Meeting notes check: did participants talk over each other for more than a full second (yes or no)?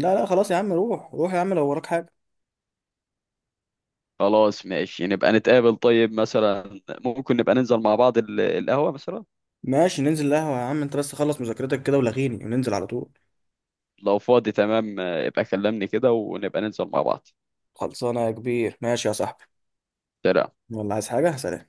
no